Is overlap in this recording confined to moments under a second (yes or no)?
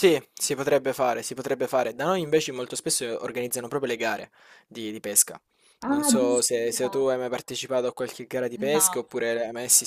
no